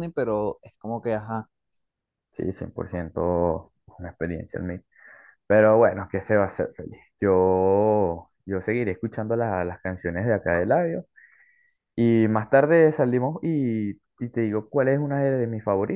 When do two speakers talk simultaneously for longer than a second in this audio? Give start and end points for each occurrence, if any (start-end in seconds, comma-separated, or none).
none